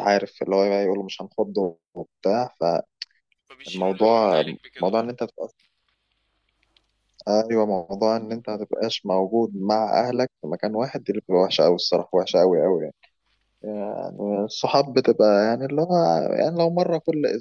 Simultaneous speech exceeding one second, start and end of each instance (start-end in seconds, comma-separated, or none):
3.7-5.1